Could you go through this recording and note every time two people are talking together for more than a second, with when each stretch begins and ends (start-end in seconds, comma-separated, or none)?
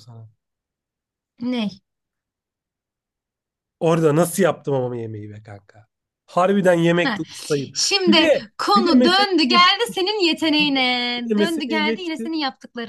8.1-9.7, 10.6-12.3